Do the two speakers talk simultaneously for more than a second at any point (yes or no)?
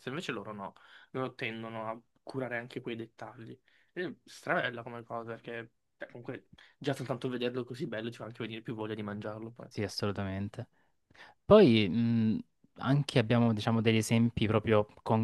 no